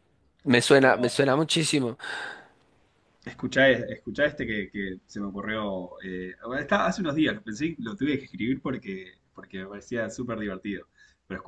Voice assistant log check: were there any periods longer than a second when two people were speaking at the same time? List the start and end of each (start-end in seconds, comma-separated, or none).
none